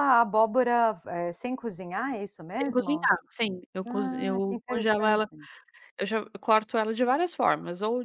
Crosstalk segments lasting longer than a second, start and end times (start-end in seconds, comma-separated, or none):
3.9-5.3